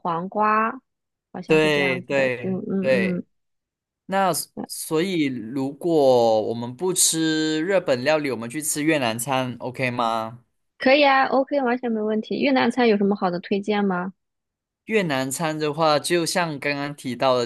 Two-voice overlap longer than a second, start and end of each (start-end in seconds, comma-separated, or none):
1.4-3.2